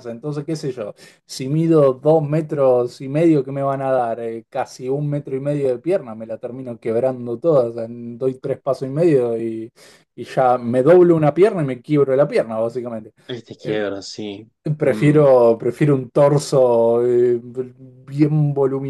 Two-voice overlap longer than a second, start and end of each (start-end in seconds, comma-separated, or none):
none